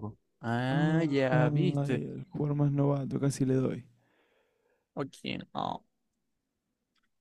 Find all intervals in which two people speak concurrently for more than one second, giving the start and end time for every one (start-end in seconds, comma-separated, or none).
0.7-2.0